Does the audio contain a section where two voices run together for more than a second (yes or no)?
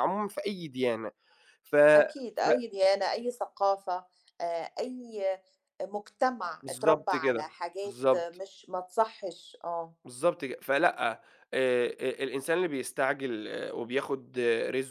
yes